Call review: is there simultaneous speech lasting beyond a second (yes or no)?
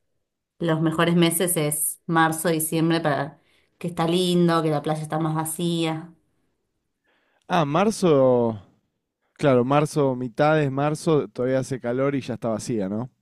no